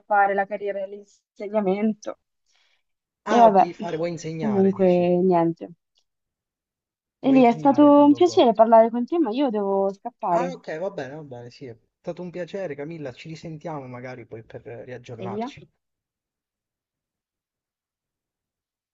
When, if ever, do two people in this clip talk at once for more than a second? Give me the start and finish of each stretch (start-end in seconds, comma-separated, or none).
7.2-8.4